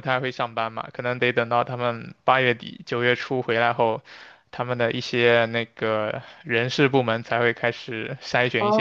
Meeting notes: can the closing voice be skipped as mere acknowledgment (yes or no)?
yes